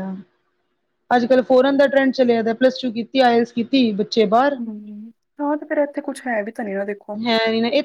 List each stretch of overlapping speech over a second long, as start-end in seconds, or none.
none